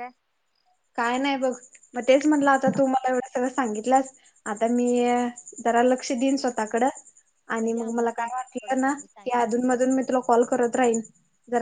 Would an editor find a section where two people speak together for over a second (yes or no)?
yes